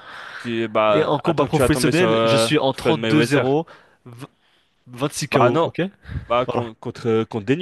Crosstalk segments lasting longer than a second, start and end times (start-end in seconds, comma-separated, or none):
0.9-3.5